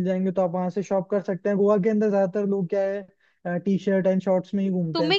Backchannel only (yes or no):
no